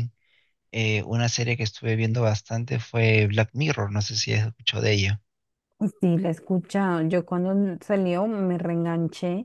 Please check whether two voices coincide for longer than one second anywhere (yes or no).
no